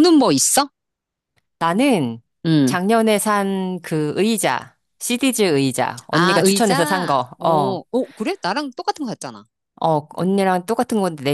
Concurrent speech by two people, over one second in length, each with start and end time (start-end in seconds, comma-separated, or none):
6.1-7.8